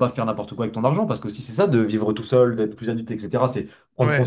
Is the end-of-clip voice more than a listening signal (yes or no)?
no